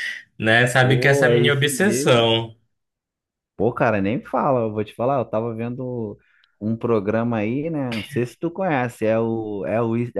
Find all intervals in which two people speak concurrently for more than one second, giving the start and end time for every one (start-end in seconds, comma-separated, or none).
0.8-2.3